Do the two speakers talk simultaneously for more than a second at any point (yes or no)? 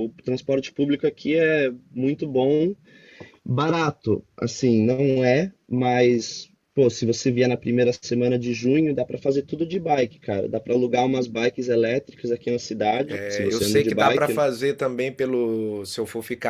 yes